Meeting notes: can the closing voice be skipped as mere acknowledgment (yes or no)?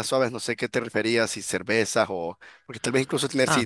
yes